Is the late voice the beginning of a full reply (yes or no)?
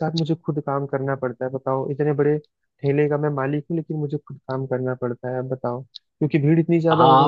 yes